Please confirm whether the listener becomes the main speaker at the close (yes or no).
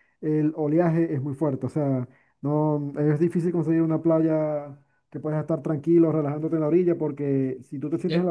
no